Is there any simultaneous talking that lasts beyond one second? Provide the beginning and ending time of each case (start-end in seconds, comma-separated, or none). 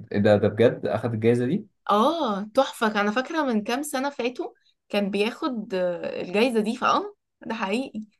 none